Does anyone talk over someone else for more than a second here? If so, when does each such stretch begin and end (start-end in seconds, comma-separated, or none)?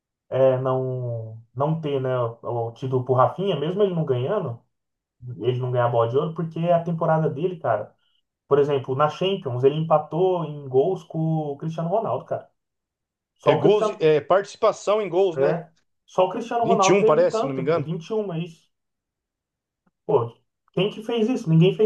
16.6-17.9